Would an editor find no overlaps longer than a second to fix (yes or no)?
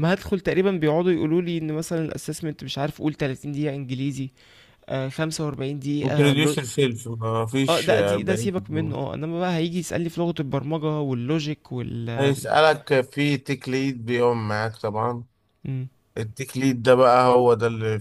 no